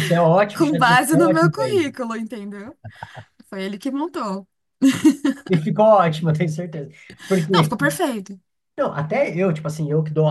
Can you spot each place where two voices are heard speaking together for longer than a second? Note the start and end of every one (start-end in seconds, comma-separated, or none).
0.6-1.9